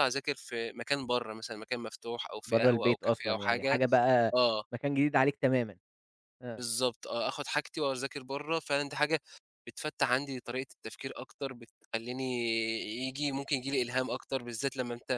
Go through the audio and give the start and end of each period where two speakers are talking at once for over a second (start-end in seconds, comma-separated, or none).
2.5-3.8